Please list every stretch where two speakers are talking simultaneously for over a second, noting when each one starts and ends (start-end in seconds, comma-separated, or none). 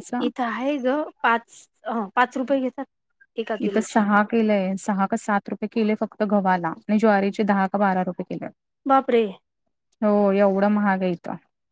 none